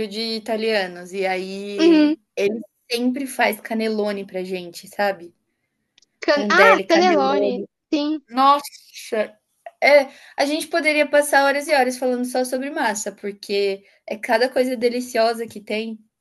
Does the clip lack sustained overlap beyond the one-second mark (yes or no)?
no